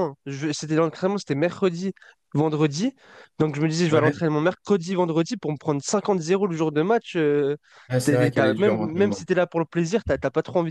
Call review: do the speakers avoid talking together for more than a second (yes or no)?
no